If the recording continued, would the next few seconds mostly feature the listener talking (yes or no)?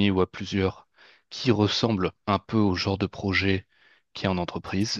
no